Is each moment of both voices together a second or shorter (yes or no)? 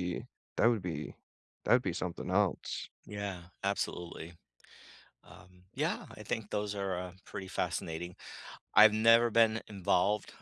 yes